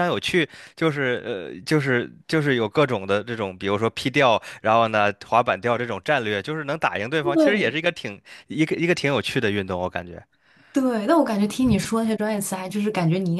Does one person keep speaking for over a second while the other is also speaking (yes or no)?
no